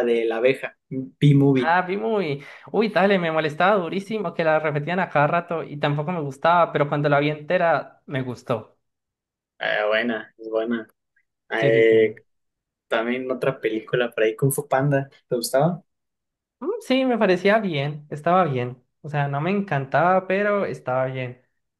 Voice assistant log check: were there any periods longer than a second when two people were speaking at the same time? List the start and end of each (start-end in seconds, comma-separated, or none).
none